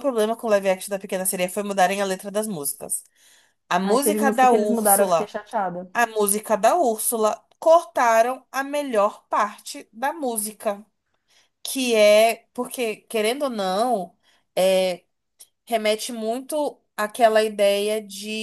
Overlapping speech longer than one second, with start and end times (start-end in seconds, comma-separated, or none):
3.8-5.3